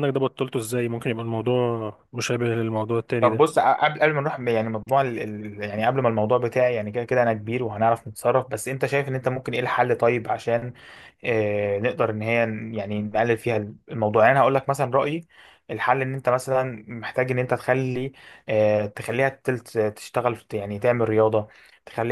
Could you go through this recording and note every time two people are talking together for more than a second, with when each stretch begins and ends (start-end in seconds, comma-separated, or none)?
none